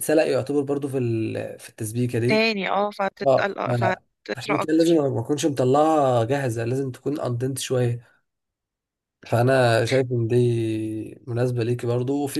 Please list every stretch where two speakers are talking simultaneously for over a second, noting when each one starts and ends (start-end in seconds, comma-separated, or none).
3.3-5.0